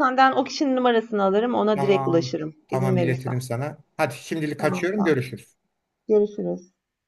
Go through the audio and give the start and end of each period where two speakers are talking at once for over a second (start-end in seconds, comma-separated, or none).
1.7-3.3